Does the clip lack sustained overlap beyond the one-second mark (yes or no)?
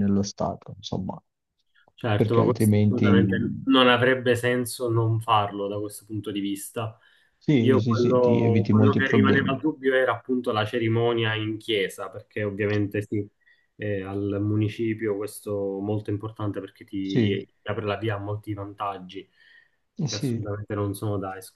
no